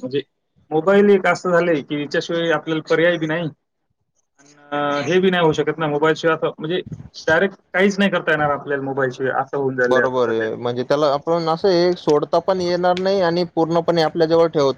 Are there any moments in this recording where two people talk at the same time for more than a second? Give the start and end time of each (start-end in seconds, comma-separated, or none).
none